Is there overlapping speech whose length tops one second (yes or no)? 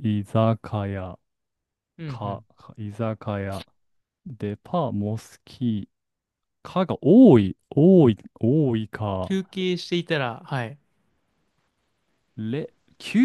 no